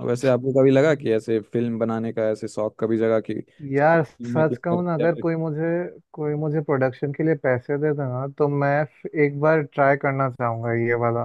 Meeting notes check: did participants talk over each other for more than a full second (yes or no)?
yes